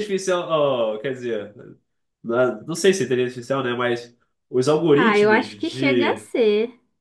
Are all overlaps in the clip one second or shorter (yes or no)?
no